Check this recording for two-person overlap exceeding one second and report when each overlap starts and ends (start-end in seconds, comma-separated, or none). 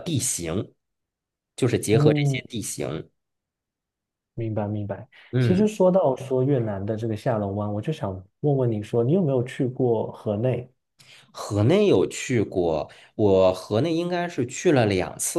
none